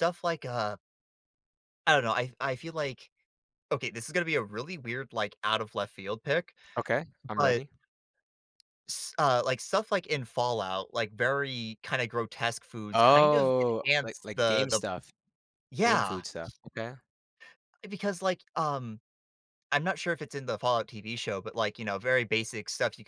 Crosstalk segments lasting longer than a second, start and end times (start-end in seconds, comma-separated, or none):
12.9-14.8